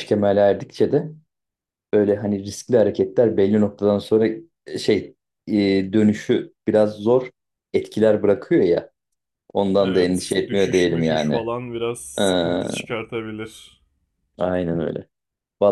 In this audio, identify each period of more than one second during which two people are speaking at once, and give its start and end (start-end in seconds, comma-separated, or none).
9.8-11.4